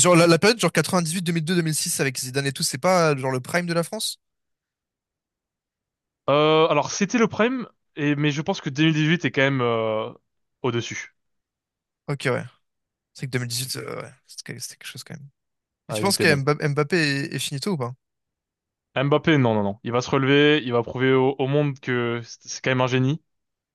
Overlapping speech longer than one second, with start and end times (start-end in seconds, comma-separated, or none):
none